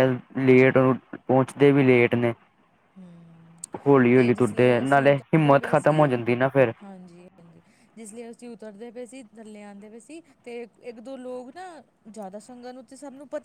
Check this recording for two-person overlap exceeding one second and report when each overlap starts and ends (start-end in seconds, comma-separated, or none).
4.1-6.1